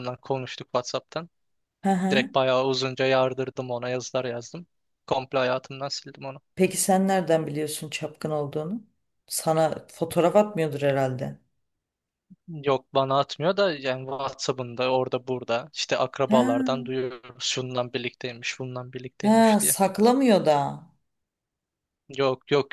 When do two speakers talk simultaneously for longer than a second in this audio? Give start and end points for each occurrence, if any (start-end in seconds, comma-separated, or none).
none